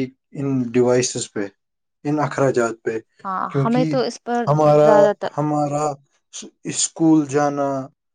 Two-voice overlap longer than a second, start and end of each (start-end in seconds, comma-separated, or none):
none